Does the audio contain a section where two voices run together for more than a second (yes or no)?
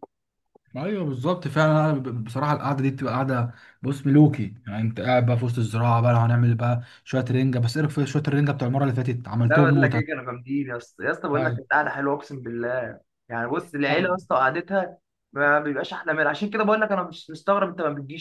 no